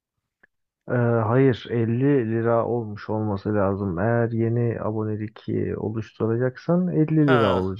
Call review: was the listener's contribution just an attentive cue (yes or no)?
yes